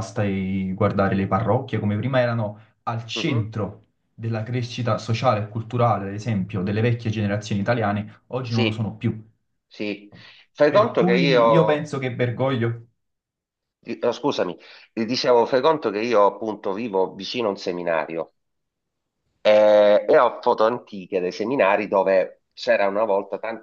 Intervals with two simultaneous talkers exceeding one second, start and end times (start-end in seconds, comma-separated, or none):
10.7-11.9